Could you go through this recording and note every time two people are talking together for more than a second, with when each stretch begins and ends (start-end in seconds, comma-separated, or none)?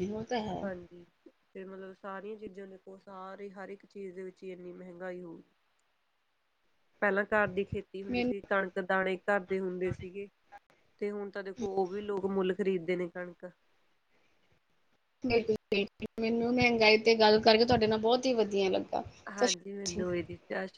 none